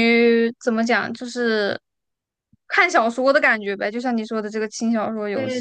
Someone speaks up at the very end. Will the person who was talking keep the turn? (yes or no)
no